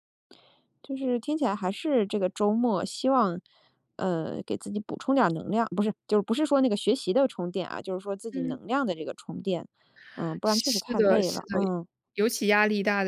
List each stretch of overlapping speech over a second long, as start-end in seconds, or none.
10.4-11.7